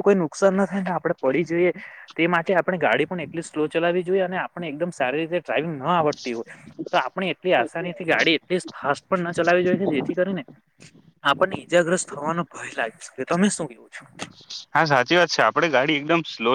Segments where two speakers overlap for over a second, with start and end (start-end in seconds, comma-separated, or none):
none